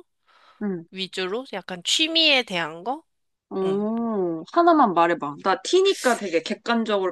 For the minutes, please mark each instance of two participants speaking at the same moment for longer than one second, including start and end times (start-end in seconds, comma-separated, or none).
none